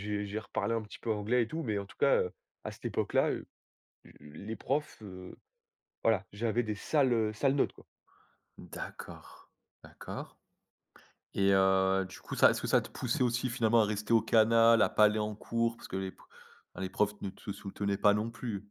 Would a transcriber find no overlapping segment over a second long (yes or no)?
yes